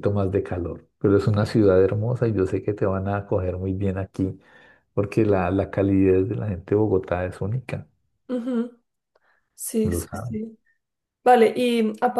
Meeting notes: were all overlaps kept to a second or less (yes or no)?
yes